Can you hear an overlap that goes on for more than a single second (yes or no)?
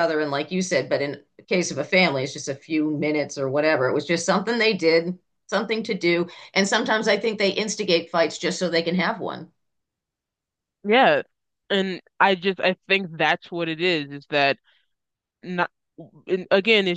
no